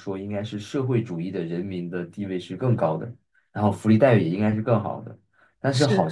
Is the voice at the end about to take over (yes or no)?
no